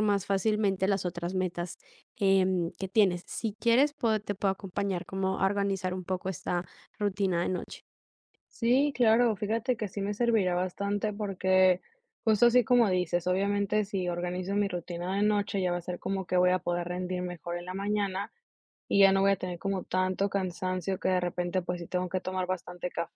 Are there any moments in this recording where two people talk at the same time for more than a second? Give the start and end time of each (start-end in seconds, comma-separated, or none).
none